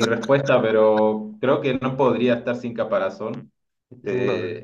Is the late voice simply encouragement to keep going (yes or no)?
yes